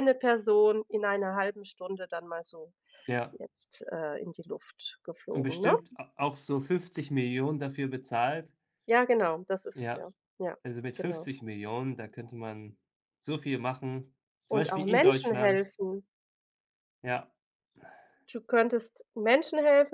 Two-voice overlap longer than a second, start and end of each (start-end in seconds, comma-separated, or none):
14.5-15.7